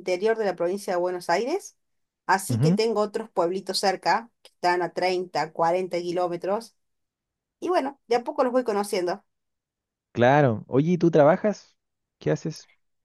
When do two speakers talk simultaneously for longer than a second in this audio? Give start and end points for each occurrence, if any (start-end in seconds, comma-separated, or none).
none